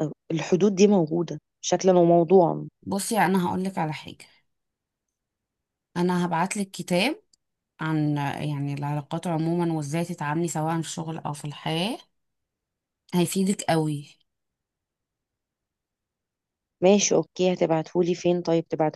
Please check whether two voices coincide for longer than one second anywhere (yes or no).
no